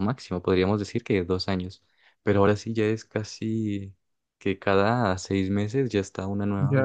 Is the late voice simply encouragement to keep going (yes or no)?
no